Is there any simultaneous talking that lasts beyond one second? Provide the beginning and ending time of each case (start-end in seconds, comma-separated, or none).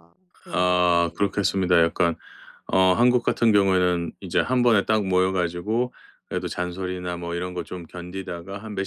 0.5-1.7